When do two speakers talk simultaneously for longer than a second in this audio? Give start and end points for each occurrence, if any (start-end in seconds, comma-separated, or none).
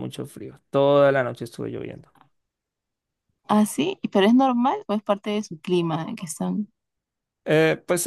none